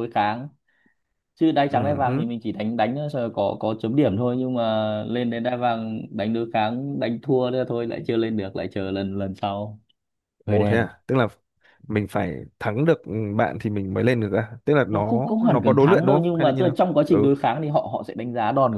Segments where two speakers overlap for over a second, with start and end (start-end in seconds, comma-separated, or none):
14.8-17.3